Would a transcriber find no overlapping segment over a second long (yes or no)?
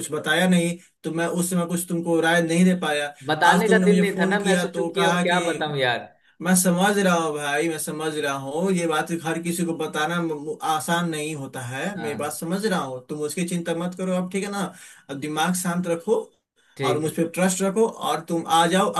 no